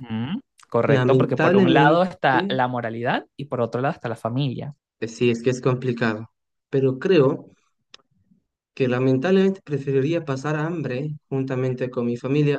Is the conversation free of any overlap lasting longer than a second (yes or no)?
no